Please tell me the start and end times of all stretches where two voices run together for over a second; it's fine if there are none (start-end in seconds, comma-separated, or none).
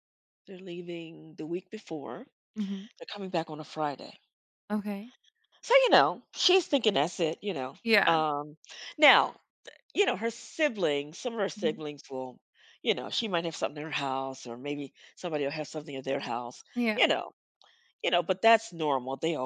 none